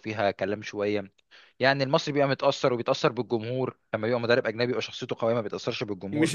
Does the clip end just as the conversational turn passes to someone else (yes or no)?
yes